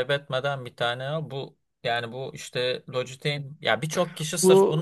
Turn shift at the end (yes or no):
no